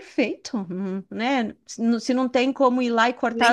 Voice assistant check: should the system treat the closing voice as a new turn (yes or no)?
yes